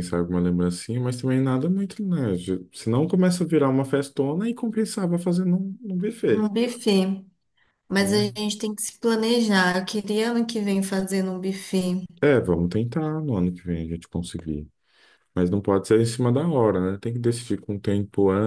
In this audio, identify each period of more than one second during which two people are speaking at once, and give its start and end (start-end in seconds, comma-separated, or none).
none